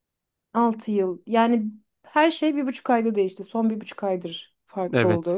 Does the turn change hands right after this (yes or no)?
yes